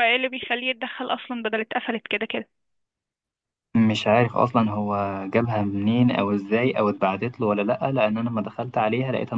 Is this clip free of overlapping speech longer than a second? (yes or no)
yes